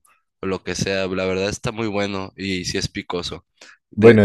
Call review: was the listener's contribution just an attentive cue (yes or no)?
yes